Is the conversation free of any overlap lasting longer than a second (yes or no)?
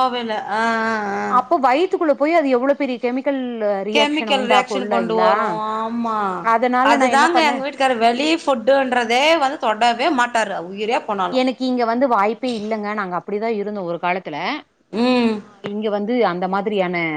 no